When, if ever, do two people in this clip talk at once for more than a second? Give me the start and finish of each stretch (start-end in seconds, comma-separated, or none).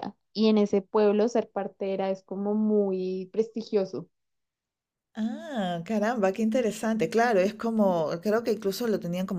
none